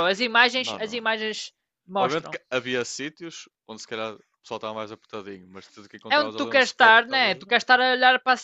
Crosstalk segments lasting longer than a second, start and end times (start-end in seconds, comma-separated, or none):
6.1-7.5